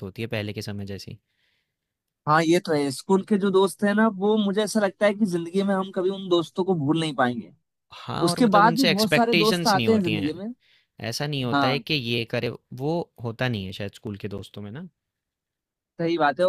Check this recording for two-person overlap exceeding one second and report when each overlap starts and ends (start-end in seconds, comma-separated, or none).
8.3-10.3